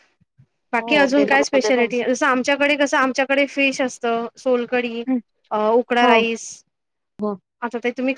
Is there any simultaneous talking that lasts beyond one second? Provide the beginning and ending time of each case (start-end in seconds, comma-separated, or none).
0.8-2.0